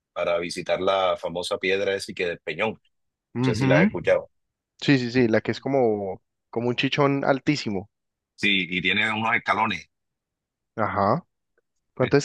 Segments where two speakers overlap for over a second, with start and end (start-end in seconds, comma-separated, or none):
none